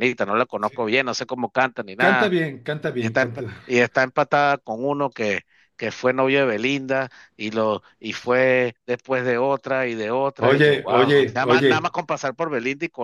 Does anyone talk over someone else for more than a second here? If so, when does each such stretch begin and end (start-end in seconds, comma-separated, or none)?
10.4-11.9